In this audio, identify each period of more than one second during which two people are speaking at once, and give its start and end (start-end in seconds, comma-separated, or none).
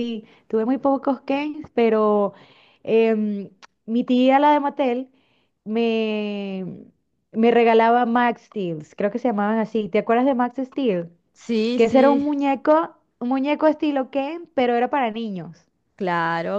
none